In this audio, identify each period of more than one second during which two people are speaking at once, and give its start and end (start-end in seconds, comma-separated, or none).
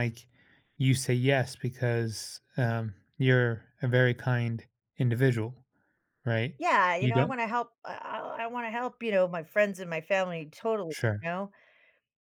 none